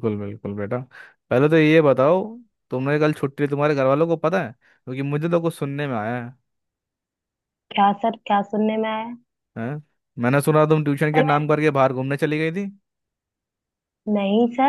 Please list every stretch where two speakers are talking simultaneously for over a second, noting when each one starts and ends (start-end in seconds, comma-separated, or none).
none